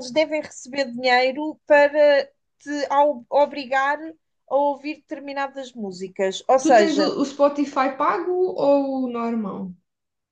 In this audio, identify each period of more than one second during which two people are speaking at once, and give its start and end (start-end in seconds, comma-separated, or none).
none